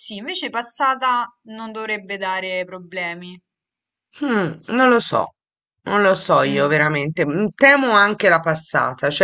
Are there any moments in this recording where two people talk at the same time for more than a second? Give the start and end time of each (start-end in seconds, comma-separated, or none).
none